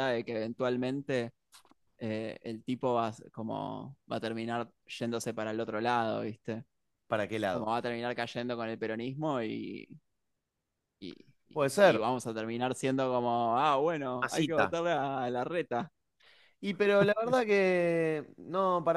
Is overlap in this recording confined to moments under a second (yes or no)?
yes